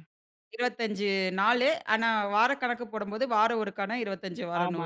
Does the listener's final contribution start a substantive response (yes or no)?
yes